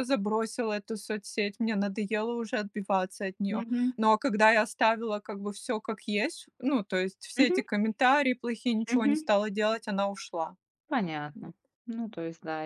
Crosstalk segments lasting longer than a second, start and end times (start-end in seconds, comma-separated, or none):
none